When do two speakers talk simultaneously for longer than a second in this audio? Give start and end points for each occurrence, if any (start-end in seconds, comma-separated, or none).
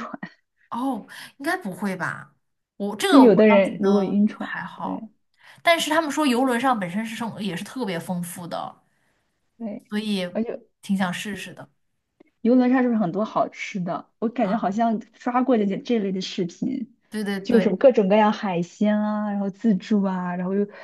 3.1-5.0